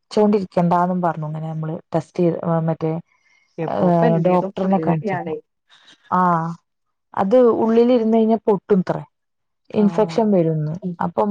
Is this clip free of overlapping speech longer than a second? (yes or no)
no